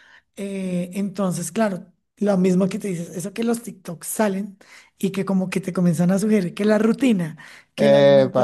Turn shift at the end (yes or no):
no